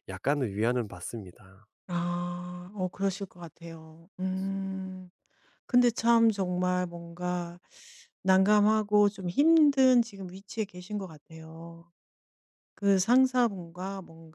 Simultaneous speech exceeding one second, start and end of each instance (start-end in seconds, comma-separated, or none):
none